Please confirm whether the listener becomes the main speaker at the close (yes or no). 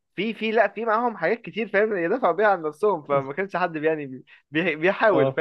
no